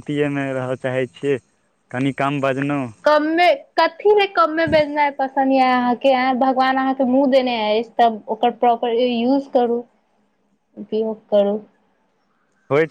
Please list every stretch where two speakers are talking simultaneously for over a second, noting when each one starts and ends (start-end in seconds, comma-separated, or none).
none